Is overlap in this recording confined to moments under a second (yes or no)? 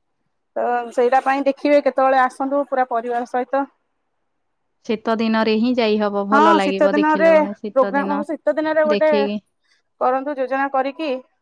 no